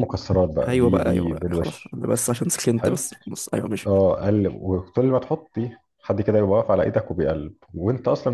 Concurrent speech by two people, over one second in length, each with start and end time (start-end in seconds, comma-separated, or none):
0.7-2.0